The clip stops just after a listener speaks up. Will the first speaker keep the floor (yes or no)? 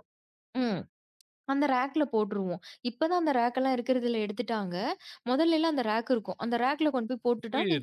no